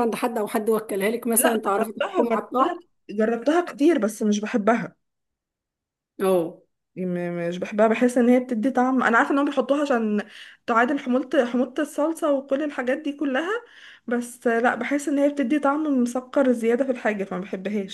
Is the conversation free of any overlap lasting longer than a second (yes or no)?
no